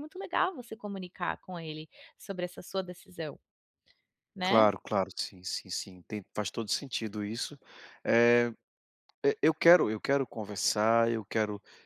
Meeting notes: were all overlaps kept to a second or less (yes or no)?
yes